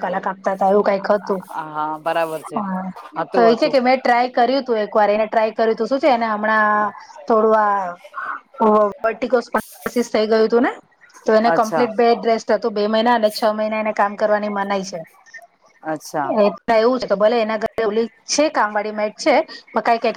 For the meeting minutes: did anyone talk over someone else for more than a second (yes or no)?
no